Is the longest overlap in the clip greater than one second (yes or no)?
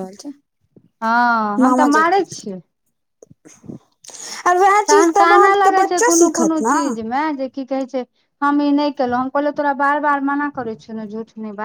yes